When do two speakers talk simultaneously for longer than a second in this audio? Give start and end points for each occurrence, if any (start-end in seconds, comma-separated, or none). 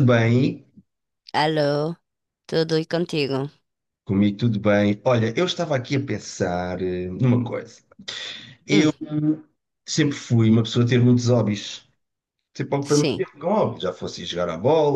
none